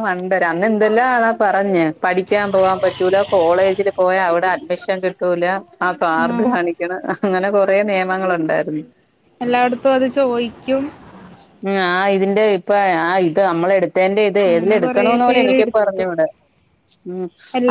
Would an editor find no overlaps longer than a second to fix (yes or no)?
no